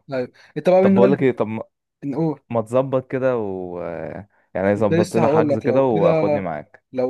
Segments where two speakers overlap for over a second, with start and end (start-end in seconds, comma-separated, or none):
4.8-6.1